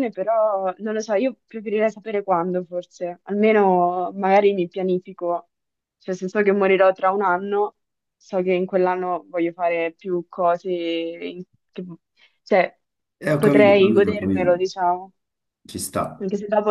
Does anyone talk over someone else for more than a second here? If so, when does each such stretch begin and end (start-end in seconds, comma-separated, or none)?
13.4-14.6